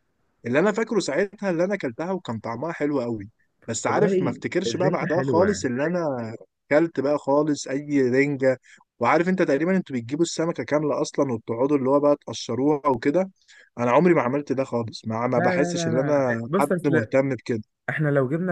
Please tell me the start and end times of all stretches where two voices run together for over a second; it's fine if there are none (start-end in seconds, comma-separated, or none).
3.9-5.7, 15.3-17.0